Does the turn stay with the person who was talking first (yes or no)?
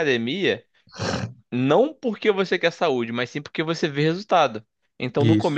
yes